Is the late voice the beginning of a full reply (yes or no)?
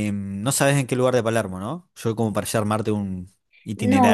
yes